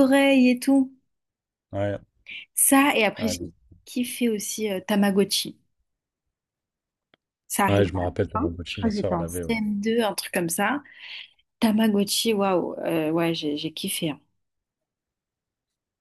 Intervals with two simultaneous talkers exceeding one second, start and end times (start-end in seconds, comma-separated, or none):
7.7-9.6